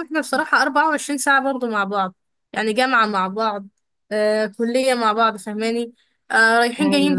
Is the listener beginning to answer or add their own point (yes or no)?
no